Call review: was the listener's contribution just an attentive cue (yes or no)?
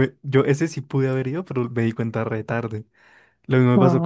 yes